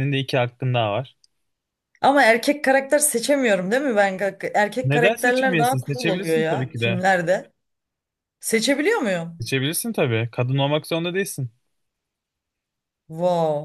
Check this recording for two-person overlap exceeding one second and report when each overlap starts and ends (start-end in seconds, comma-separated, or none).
4.8-7.0